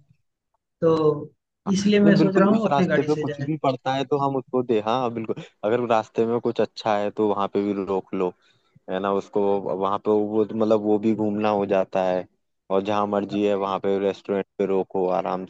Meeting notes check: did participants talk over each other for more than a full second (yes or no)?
yes